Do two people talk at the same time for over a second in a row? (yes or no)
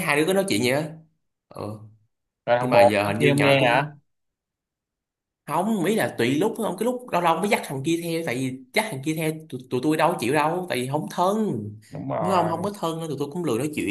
yes